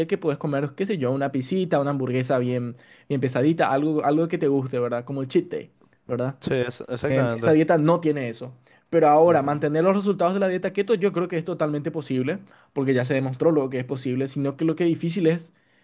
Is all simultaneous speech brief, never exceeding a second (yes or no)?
yes